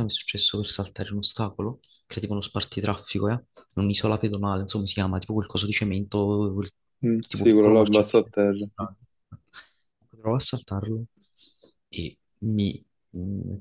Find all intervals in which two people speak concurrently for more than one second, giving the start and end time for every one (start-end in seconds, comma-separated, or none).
7.2-8.9